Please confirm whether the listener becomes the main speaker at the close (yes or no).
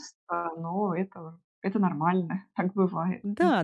yes